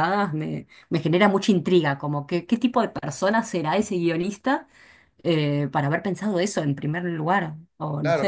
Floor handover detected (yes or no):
yes